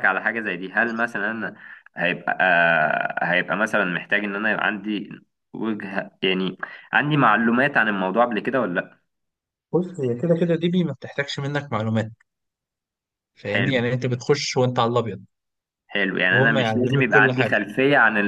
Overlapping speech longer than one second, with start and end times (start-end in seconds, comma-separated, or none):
16.3-17.6